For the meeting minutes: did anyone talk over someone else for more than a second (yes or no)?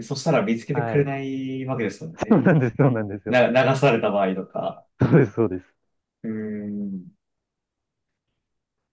no